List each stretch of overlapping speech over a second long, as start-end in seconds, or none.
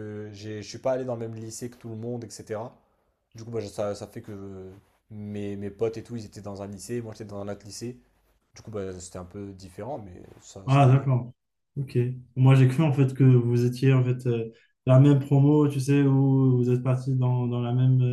none